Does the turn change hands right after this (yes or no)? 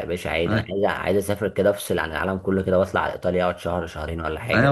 yes